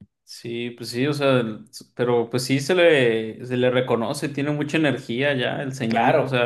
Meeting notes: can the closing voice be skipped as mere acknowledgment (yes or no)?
no